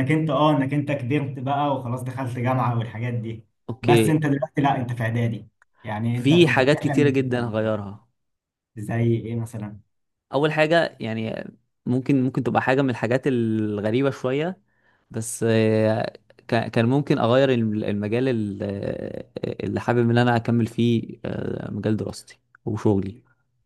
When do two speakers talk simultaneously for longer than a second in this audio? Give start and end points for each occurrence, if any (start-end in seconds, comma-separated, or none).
6.1-7.4